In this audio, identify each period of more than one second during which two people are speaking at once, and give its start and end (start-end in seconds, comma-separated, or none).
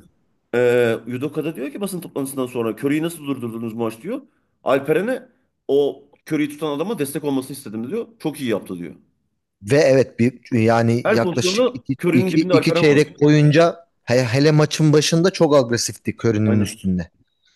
11.0-13.0